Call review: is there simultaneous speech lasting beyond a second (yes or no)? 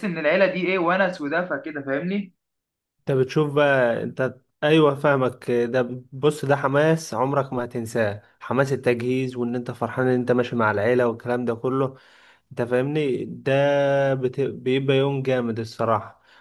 no